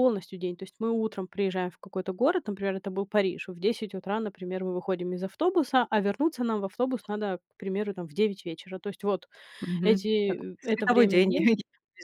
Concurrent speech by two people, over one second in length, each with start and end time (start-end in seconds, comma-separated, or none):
9.8-11.5